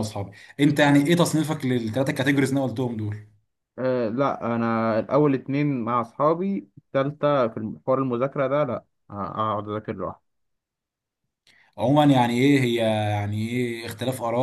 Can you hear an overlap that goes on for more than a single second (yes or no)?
no